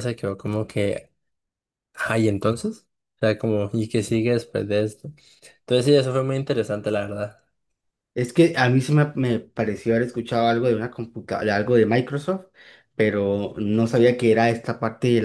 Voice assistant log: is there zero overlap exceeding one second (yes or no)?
yes